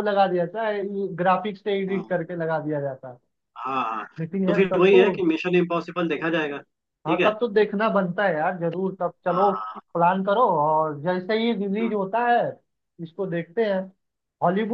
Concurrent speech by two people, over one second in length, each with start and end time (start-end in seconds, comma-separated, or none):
none